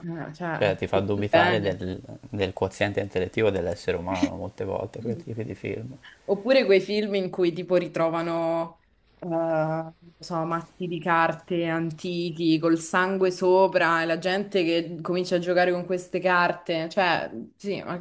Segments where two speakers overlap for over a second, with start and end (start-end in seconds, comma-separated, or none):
0.6-1.8